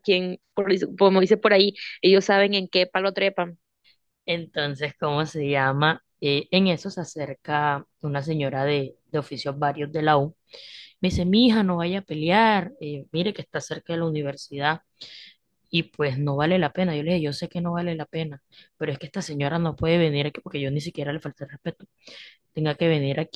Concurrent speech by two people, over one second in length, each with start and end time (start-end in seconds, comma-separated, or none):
none